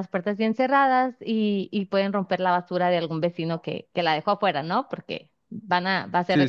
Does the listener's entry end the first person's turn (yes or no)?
no